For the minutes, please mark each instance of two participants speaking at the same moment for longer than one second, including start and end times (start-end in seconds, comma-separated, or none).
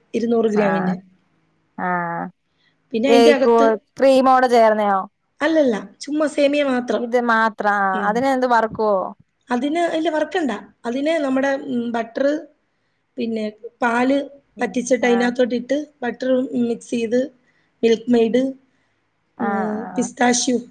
none